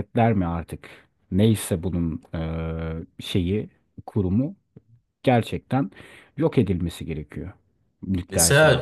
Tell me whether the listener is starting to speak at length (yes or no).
yes